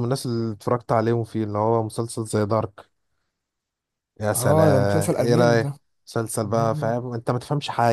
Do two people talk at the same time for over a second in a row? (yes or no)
yes